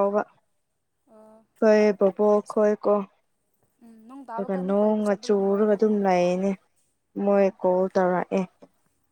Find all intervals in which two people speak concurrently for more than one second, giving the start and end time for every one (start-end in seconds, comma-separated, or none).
4.3-6.1